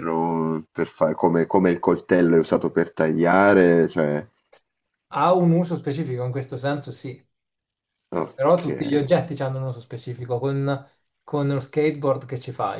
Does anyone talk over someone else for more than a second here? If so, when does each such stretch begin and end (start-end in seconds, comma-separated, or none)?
none